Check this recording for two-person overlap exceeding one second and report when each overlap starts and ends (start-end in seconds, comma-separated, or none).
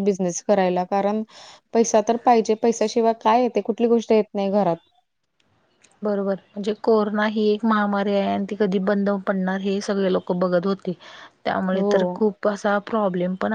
none